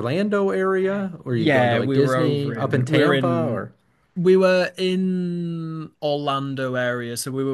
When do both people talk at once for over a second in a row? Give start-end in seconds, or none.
1.3-3.6